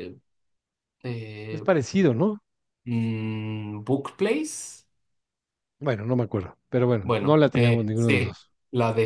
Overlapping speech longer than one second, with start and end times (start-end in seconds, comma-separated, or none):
7.0-8.5